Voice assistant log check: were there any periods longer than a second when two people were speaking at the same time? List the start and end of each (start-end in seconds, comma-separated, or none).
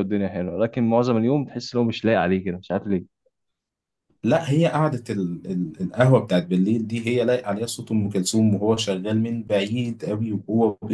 none